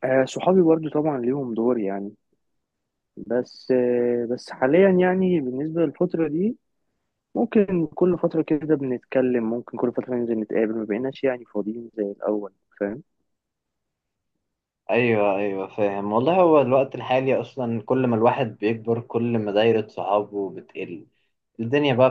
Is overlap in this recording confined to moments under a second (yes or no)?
yes